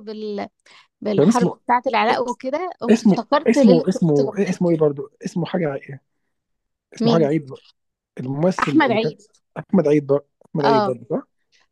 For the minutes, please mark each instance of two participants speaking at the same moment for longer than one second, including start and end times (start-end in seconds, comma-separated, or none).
2.9-4.6